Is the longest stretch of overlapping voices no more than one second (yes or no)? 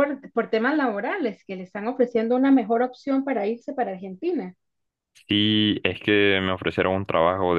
yes